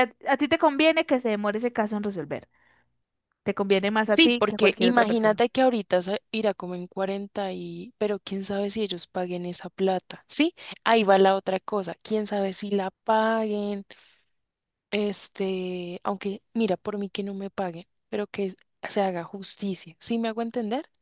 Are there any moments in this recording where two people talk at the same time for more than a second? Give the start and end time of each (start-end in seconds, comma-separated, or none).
4.1-5.4